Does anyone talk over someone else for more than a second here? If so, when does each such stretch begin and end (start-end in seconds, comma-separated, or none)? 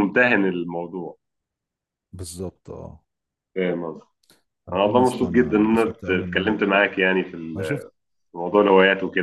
4.7-6.5